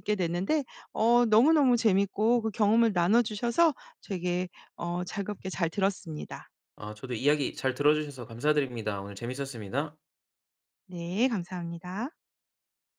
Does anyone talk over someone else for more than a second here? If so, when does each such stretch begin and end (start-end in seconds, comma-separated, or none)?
none